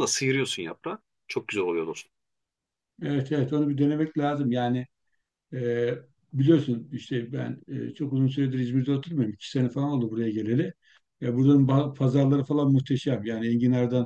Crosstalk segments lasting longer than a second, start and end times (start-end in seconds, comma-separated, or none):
none